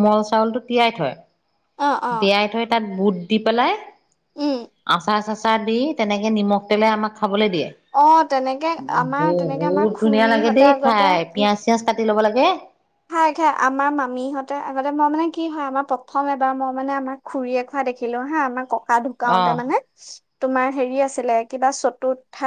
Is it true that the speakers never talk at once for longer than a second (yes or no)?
no